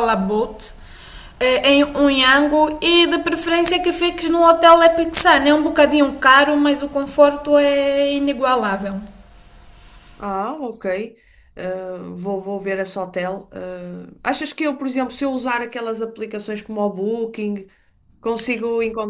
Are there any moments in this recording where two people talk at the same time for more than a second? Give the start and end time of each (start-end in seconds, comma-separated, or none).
none